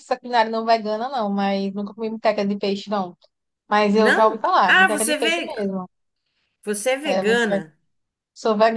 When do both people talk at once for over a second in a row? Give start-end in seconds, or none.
4.0-5.5